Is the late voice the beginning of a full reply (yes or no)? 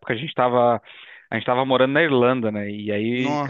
no